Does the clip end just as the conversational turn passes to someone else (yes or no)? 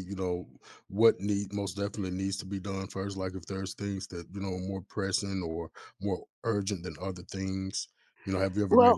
yes